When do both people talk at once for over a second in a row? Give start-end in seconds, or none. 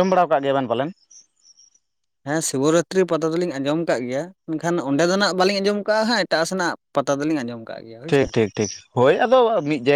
none